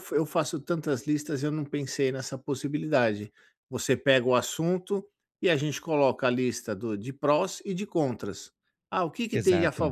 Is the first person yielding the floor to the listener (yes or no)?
no